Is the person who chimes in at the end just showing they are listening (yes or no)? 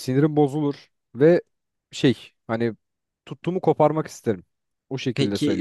no